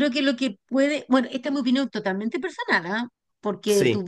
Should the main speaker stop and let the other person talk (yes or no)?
no